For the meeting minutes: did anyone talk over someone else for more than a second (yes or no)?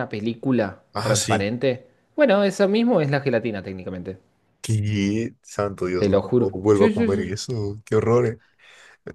yes